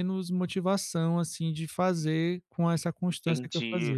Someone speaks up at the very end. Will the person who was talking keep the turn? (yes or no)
no